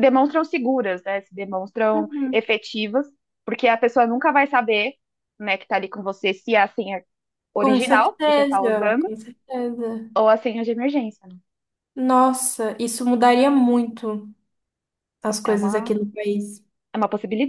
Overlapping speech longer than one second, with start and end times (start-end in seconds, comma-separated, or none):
7.6-9.1